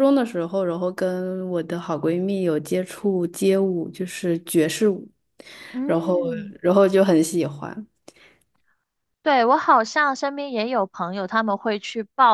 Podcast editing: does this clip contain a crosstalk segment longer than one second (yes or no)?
no